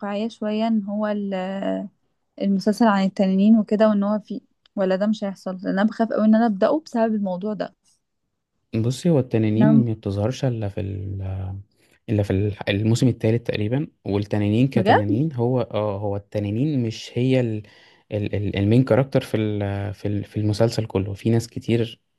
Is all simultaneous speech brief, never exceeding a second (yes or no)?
yes